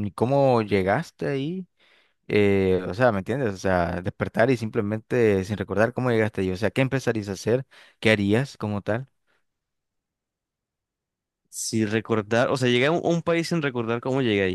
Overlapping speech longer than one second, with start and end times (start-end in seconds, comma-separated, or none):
none